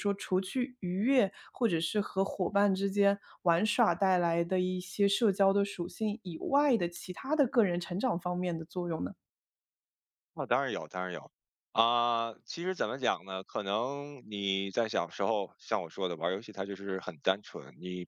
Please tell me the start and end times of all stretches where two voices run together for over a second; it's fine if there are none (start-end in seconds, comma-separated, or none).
none